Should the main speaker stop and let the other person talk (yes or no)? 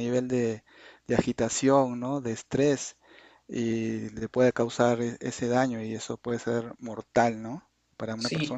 yes